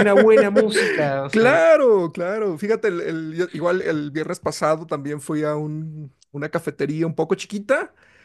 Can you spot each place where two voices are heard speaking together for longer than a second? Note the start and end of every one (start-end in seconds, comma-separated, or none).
none